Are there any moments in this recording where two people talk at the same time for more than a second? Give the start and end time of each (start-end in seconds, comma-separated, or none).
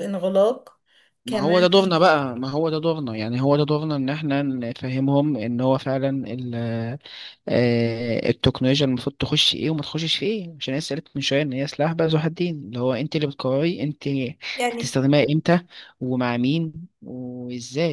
none